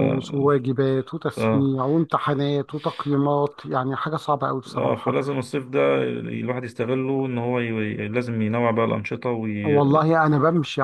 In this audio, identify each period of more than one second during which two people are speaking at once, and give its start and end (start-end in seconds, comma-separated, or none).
none